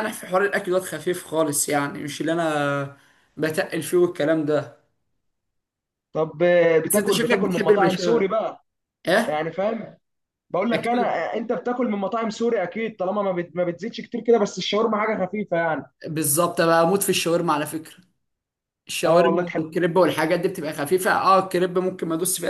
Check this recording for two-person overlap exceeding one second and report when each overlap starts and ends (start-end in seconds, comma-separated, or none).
6.8-8.3